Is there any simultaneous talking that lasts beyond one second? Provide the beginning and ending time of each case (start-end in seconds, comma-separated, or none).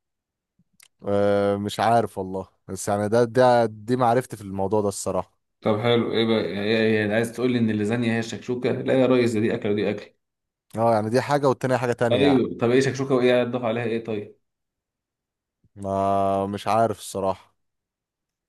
none